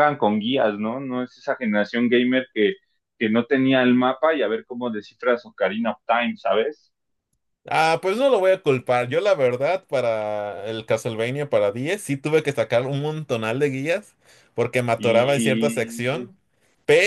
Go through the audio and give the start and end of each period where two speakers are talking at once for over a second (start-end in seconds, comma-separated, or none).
15.0-16.3